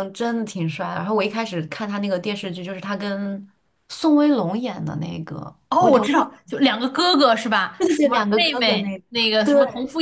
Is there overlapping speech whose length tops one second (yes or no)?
yes